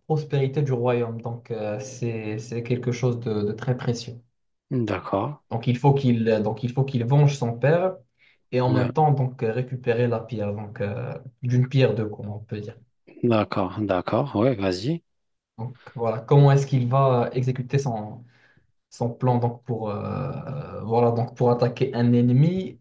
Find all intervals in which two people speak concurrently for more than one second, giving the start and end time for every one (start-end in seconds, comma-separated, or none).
none